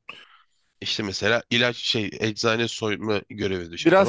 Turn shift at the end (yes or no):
yes